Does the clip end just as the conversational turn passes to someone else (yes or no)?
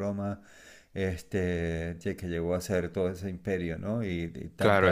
no